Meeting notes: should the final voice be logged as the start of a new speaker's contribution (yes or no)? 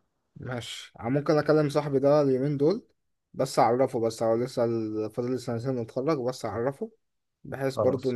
no